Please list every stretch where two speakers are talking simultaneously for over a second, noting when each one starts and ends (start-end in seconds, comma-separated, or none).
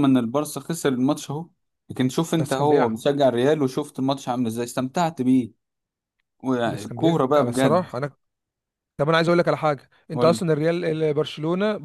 6.7-7.9